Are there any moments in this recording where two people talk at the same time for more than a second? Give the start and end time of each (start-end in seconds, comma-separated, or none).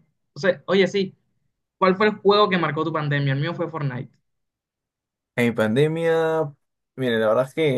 none